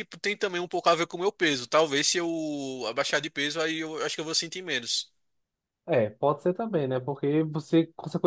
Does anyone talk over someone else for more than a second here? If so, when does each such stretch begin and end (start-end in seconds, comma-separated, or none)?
none